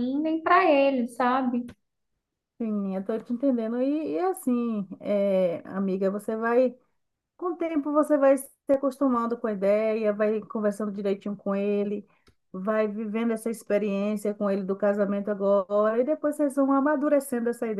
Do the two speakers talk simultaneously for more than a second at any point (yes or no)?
no